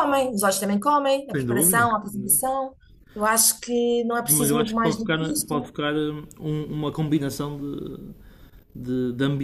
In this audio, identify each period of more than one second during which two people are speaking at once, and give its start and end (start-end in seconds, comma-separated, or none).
1.3-2.6, 4.2-5.7